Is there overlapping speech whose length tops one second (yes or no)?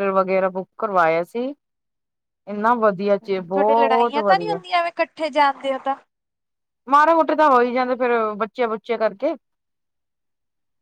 no